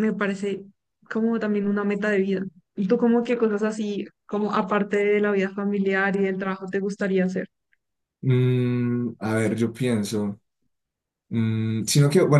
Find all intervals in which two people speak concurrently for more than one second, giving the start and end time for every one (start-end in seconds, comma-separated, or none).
none